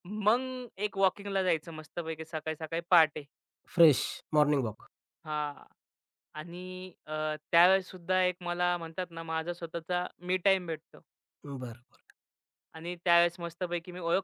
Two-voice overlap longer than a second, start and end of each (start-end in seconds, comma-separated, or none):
none